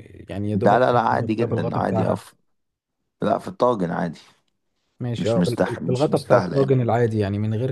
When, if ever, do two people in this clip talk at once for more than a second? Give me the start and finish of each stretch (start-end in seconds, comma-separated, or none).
0.5-2.3, 5.2-6.7